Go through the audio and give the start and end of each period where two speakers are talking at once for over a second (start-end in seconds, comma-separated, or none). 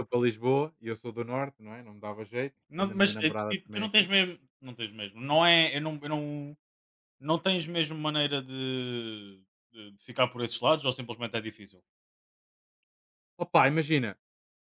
2.7-4.1